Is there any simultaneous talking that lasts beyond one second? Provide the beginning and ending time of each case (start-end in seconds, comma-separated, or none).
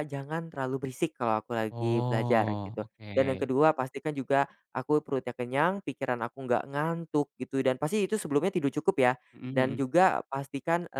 1.7-3.5